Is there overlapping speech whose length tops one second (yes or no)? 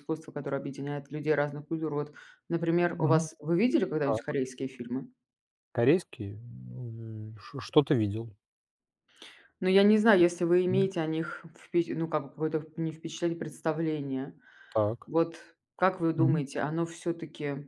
no